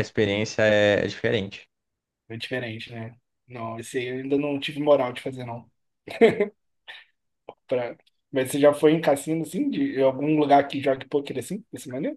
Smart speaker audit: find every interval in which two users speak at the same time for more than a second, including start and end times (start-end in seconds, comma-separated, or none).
none